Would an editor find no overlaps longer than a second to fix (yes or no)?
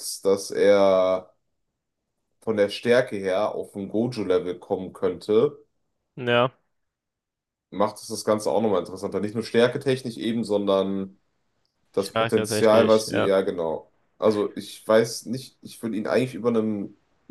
no